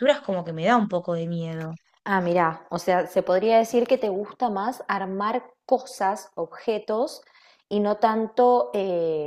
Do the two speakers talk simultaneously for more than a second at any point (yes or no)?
no